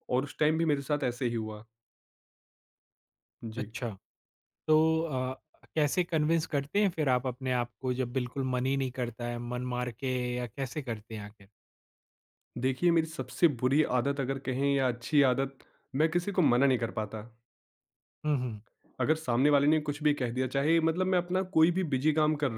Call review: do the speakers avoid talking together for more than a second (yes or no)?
yes